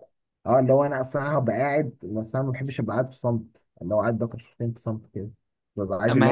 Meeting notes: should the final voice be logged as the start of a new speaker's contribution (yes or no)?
no